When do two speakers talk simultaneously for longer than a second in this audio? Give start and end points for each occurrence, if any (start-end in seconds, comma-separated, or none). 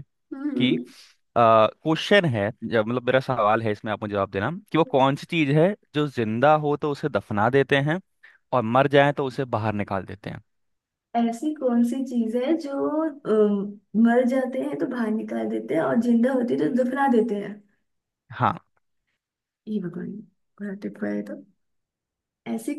none